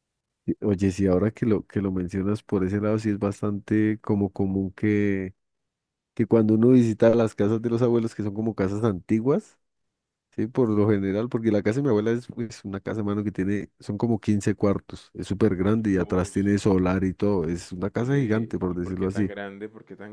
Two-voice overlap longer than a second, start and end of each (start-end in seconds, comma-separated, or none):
18.0-19.3